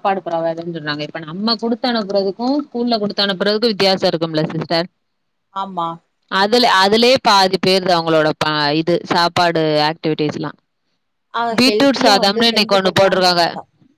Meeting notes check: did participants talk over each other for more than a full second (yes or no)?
yes